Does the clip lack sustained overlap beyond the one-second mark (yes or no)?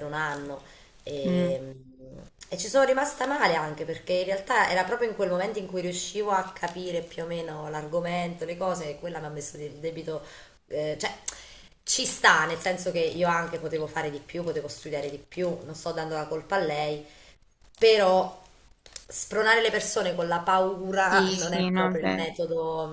no